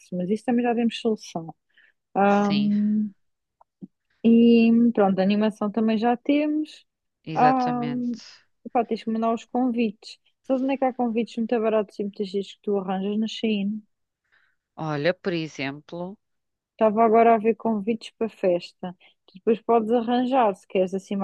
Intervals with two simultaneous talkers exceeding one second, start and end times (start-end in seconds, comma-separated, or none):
none